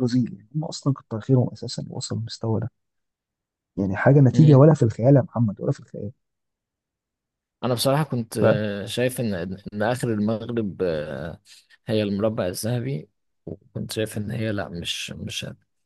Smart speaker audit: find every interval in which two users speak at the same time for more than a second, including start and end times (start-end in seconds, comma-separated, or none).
none